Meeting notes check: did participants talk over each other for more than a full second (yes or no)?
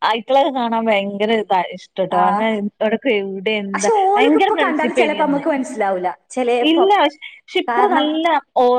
yes